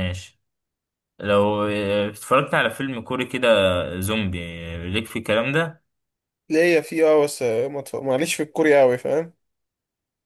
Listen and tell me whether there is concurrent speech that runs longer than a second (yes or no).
no